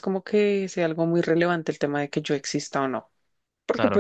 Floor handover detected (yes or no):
no